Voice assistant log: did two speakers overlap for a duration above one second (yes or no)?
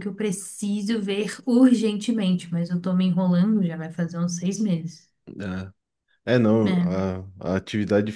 no